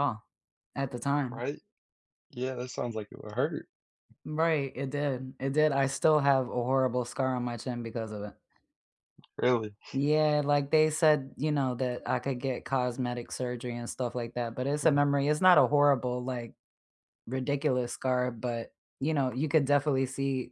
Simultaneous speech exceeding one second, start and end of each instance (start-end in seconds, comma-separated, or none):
none